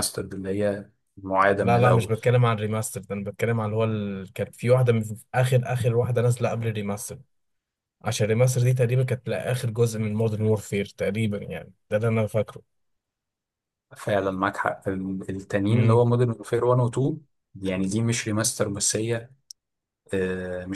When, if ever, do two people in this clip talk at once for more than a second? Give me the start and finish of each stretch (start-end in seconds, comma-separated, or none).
none